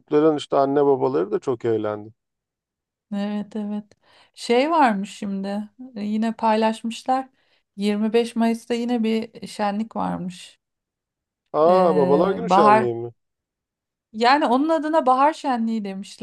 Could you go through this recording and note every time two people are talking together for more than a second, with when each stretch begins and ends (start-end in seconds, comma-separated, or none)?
11.7-12.9